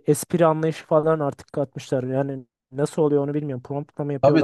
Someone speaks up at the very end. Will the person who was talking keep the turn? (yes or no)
no